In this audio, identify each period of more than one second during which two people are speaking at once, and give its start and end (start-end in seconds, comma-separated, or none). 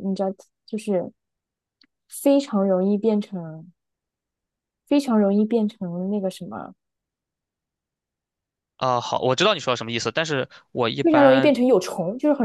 none